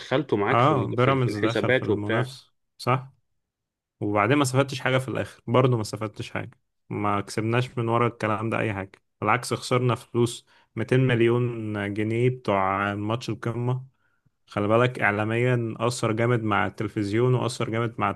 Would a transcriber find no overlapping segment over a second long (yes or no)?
no